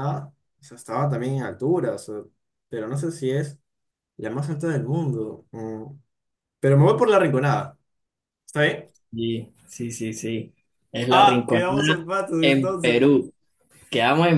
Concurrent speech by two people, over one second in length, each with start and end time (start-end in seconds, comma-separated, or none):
11.1-13.1